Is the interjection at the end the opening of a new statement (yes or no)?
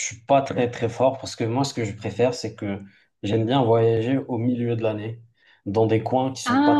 no